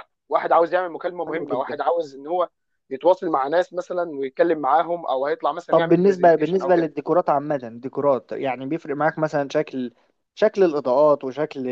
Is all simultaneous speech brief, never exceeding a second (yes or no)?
no